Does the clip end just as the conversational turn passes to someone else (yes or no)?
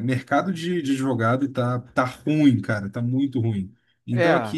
no